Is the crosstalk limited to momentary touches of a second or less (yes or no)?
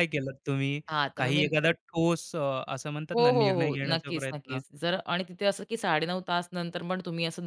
no